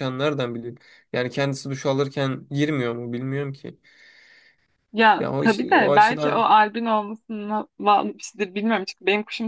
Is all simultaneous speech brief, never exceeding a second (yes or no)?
no